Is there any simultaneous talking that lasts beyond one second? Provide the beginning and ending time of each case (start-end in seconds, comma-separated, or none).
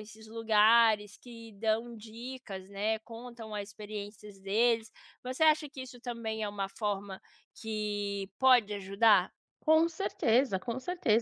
none